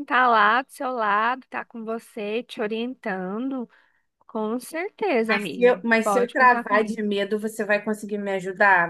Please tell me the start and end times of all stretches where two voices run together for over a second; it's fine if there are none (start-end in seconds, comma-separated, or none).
5.3-7.0